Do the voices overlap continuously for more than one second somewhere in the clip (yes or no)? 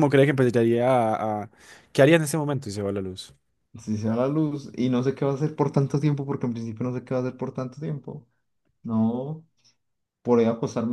no